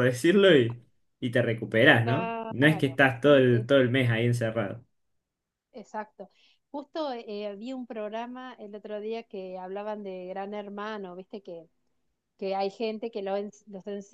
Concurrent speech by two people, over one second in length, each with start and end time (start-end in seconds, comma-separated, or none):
2.0-3.7